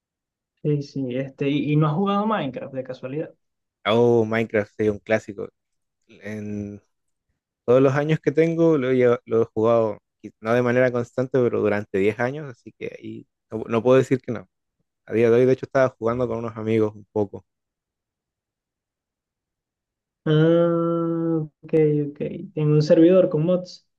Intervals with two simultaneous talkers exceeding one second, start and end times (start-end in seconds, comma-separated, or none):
none